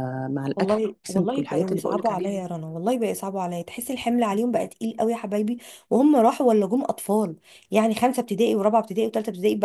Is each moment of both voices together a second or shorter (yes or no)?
no